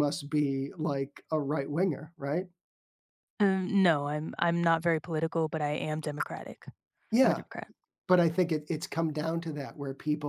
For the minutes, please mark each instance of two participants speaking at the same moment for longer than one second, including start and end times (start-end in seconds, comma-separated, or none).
none